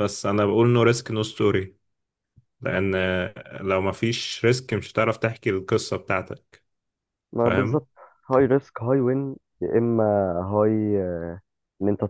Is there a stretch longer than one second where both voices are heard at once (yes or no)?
no